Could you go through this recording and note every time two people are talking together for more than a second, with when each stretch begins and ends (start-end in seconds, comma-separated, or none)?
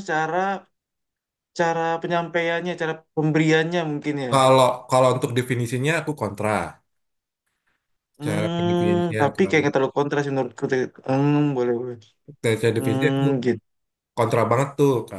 8.2-9.7